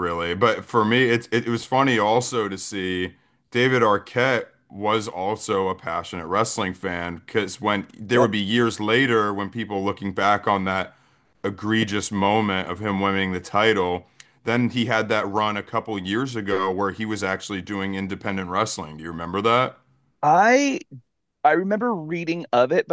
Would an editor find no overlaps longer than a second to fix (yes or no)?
yes